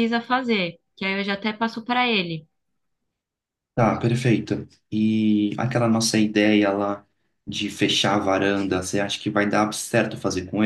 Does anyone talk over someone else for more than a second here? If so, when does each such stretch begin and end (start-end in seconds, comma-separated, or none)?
none